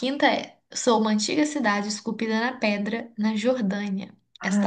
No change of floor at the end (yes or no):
no